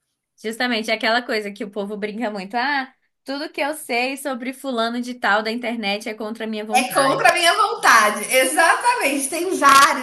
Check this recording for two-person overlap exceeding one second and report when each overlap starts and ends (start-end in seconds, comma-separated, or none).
none